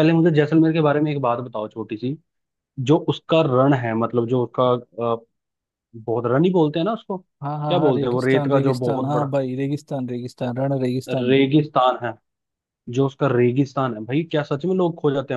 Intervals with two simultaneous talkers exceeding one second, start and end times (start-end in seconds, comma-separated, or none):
7.4-9.3